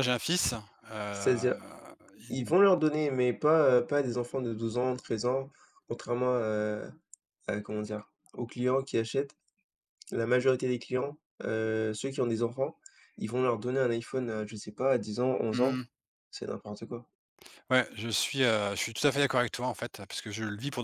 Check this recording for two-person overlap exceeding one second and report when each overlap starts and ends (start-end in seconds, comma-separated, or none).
none